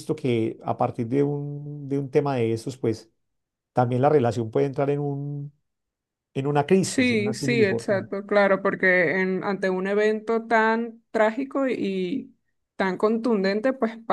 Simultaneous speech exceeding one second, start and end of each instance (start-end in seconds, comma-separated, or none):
6.8-8.1